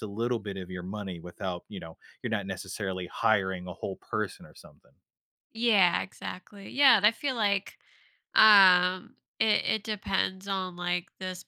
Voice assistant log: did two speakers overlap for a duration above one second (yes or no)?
no